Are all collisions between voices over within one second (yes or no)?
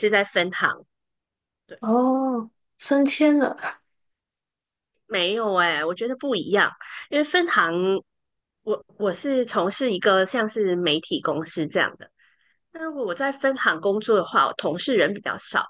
yes